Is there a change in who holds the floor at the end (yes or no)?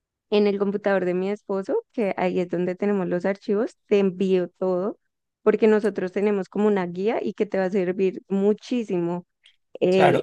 yes